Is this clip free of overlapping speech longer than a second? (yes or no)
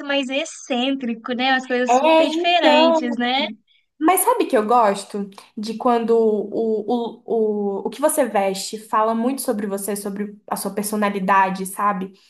no